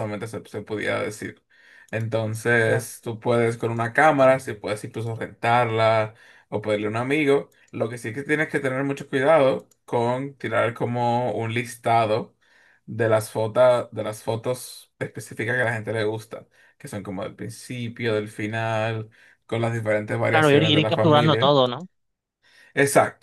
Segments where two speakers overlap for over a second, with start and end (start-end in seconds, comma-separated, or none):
20.3-21.6